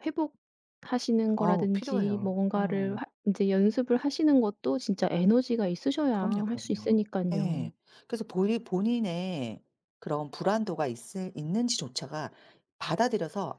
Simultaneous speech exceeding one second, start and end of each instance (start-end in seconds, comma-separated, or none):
1.4-3.0, 6.1-7.7